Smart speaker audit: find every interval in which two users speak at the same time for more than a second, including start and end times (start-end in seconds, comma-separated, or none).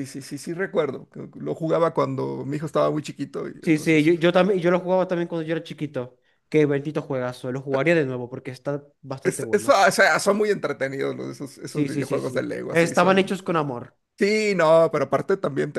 11.7-13.4